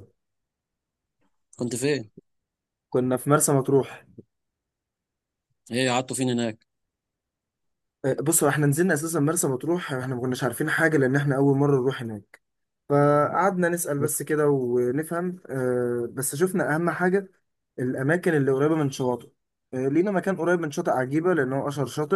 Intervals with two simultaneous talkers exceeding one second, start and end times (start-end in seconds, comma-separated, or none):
none